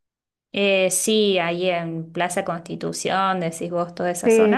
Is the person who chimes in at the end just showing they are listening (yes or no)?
no